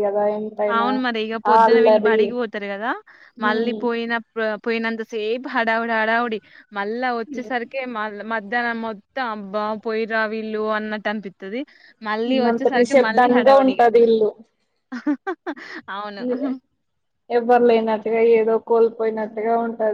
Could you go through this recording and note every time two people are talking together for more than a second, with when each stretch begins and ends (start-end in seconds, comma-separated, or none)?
12.3-13.9